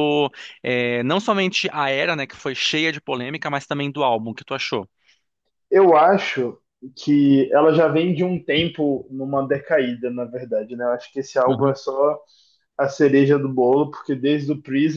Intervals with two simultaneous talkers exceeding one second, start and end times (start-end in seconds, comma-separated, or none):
none